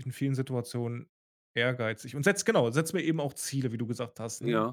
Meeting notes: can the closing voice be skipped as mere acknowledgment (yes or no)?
no